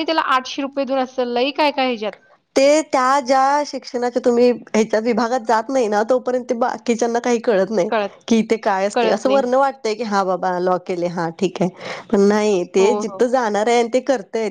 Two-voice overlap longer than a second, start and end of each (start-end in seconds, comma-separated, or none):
none